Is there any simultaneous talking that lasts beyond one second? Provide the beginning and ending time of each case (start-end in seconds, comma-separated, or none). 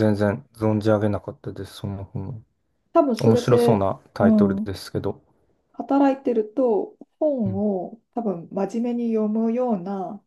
3.2-4.7